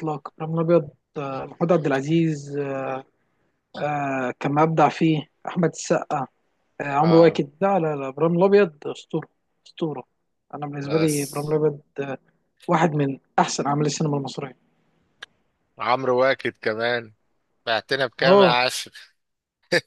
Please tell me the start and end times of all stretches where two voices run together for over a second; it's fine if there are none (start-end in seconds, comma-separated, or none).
none